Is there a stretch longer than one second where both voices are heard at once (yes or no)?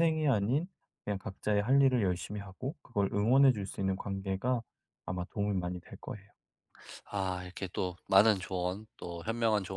no